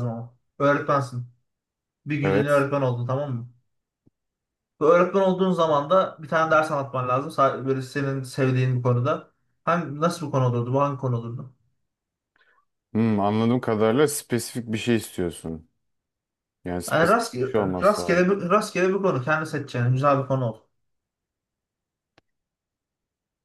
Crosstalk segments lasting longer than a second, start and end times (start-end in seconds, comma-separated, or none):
16.9-18.3